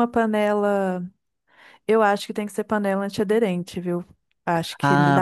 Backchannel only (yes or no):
no